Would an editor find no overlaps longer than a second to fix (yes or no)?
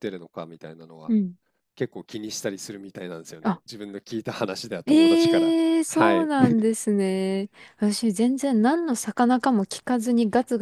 no